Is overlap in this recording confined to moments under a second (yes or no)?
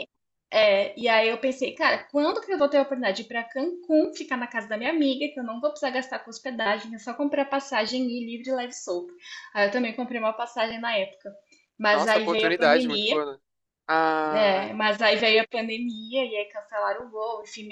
no